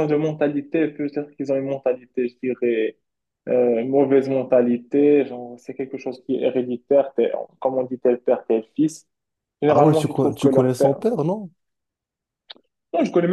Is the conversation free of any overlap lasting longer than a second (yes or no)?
no